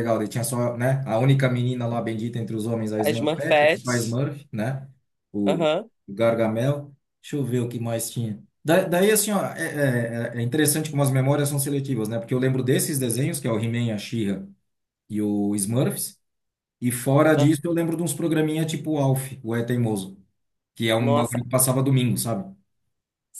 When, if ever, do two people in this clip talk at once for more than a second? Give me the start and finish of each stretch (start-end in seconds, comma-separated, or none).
3.0-4.2